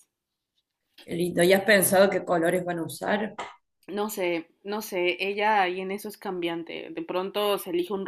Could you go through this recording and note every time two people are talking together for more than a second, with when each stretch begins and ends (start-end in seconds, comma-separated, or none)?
none